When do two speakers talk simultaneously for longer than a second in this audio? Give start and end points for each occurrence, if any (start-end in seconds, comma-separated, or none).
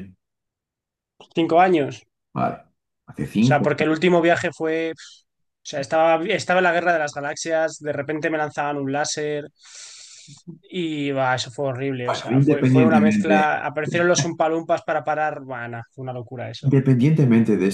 12.1-13.5